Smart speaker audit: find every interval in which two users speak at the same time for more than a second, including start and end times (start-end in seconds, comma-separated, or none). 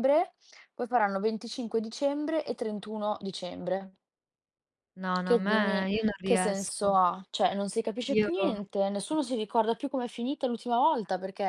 5.3-6.9